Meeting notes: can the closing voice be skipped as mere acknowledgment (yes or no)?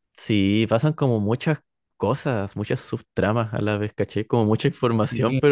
yes